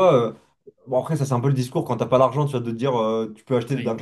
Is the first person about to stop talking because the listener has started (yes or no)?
no